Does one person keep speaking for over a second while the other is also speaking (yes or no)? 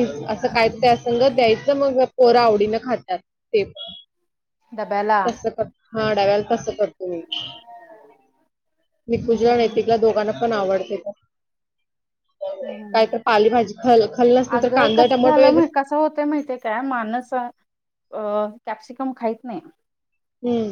no